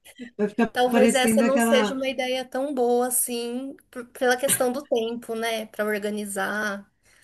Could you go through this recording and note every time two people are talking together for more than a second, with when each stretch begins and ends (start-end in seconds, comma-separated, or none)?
0.7-2.0